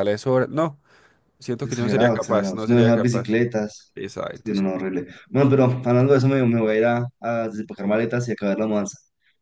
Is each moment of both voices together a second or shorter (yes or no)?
no